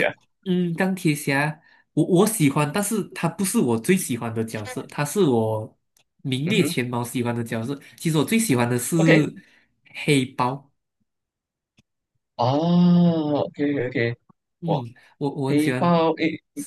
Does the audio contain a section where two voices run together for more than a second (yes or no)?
no